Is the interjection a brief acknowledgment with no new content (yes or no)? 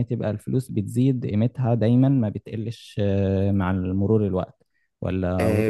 no